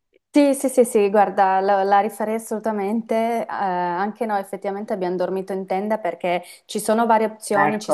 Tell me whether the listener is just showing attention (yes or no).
yes